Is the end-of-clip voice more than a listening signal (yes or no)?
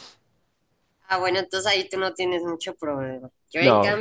no